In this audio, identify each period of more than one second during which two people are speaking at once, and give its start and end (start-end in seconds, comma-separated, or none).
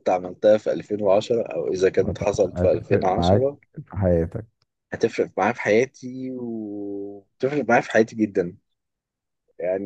2.0-3.6